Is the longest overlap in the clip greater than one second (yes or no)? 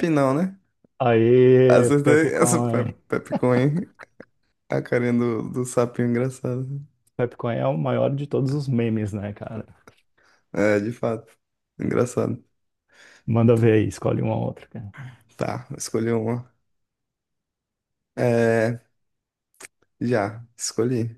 yes